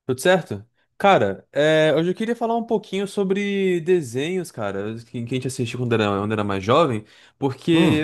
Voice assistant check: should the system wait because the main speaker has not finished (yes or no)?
yes